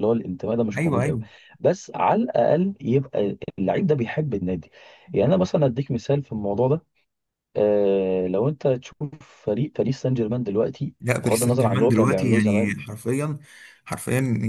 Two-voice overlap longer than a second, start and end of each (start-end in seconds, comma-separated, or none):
11.0-12.7